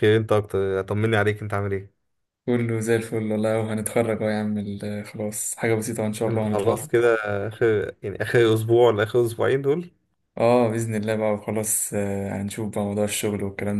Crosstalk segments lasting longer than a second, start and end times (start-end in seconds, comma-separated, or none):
none